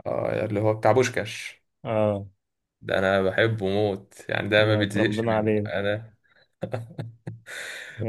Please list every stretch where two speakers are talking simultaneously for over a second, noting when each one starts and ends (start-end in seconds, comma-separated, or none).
4.6-5.8